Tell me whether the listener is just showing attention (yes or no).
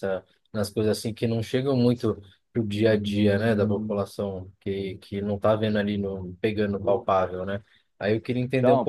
yes